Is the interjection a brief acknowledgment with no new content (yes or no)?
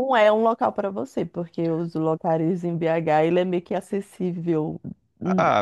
no